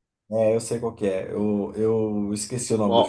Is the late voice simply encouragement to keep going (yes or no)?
no